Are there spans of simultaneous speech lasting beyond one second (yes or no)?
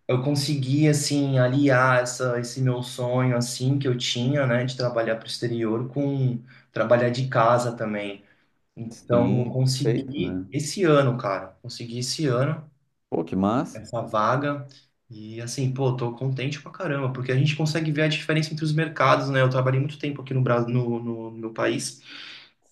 yes